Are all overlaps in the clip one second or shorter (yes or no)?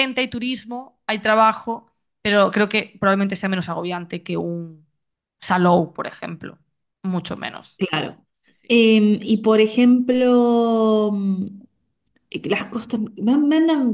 yes